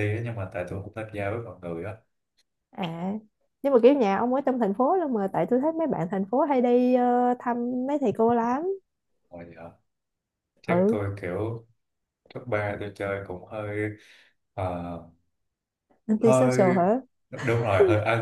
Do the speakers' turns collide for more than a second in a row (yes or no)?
no